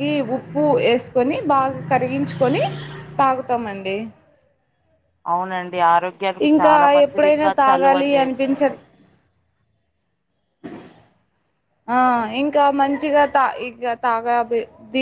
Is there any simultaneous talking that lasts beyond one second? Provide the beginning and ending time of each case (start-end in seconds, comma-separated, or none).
6.5-8.6